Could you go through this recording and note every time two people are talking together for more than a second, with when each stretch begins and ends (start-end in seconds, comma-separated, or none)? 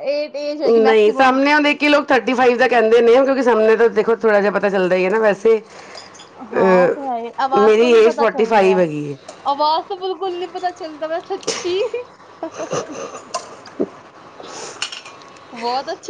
6.6-8.8